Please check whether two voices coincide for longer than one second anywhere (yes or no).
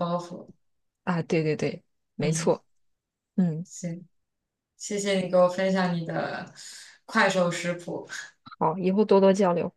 no